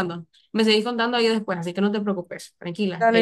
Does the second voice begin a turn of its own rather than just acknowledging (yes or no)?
yes